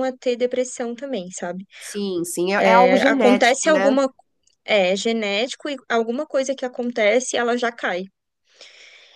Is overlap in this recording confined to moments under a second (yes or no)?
no